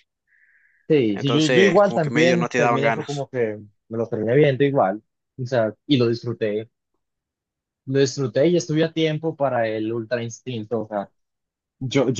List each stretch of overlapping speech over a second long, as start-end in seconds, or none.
1.1-3.3